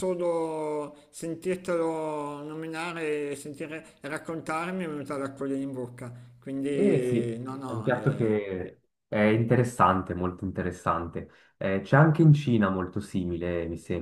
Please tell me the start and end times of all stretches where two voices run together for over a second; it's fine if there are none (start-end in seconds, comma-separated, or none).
6.7-8.3